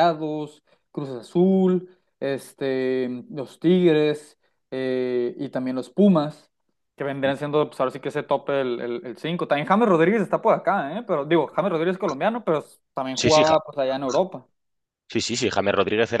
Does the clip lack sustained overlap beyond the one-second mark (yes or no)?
yes